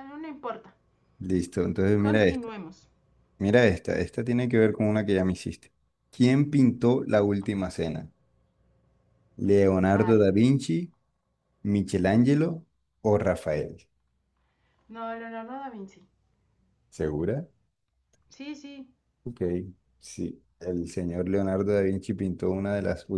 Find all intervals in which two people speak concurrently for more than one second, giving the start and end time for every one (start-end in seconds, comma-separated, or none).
none